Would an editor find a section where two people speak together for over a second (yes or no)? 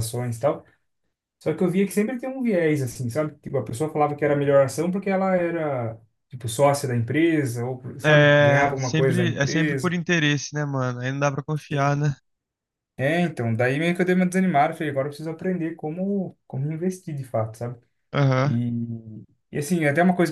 yes